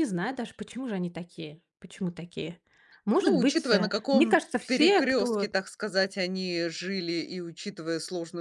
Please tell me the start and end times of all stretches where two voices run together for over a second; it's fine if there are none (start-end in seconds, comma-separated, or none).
3.2-5.5